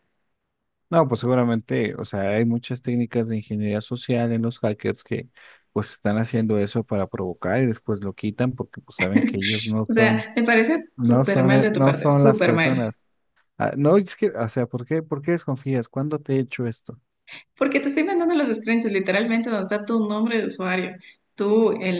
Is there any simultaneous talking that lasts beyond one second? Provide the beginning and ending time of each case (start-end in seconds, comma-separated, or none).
10.9-12.9